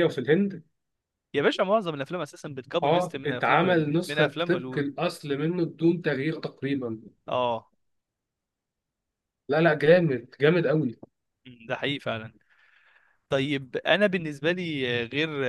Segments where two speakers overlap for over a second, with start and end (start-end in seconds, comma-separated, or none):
2.8-4.8